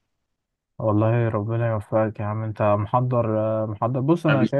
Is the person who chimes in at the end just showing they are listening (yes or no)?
yes